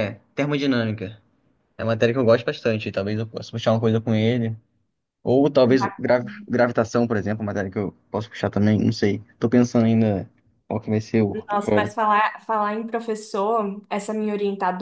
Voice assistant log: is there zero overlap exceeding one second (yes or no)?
yes